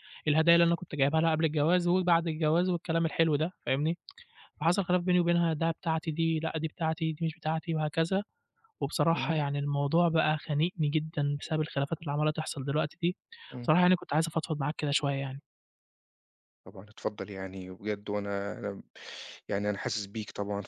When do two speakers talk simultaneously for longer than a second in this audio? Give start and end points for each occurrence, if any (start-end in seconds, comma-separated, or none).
none